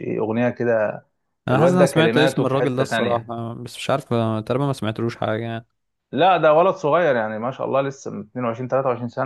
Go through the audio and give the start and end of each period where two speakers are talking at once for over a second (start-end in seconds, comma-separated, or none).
1.5-3.3